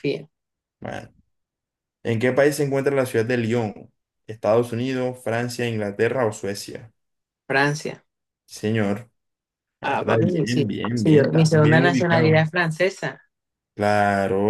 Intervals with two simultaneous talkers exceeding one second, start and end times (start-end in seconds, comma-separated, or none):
9.8-12.4